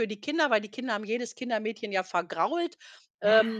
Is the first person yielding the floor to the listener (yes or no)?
no